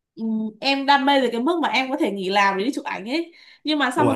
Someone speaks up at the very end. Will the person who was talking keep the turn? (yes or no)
yes